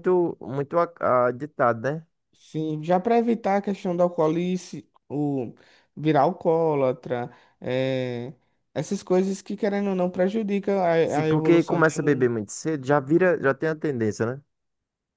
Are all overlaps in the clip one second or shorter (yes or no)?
no